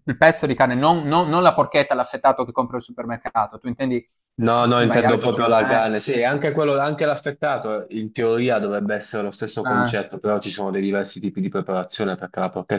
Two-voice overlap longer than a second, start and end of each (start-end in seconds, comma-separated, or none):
4.5-5.8